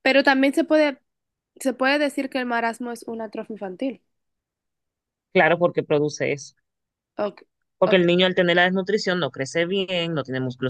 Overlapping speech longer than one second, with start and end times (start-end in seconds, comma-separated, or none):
none